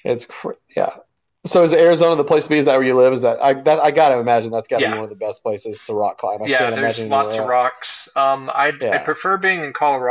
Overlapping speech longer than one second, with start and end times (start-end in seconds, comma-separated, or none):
6.4-7.7